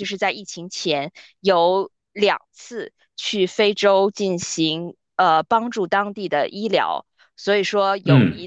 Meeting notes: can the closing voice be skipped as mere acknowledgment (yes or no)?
yes